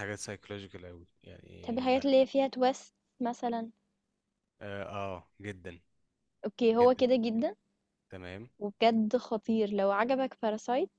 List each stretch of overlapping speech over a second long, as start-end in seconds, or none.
none